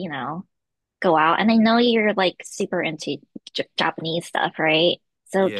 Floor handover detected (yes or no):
no